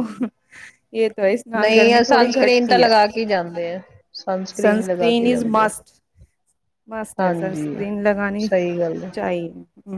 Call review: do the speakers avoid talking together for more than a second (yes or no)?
no